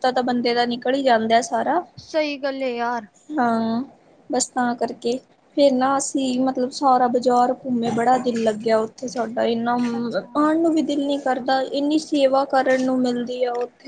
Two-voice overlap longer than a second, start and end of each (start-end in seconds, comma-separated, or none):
none